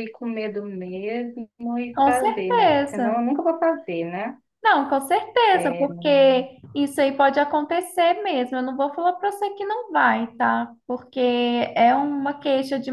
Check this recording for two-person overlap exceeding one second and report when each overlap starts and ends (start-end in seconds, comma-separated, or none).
1.9-3.2